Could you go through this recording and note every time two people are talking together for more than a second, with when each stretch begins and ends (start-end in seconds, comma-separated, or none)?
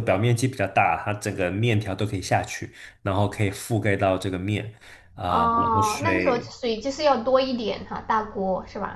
5.3-6.5